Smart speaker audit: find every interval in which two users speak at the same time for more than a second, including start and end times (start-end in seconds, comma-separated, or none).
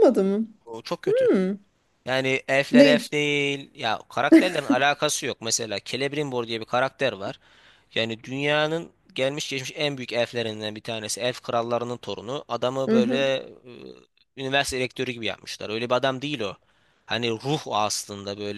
none